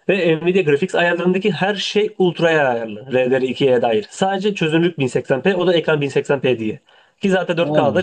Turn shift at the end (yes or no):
no